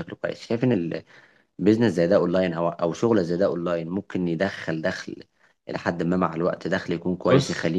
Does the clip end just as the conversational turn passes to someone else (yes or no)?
no